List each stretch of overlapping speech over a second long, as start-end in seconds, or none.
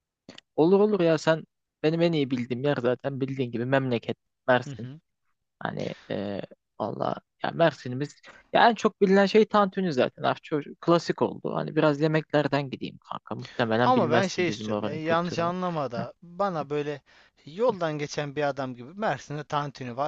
13.8-15.5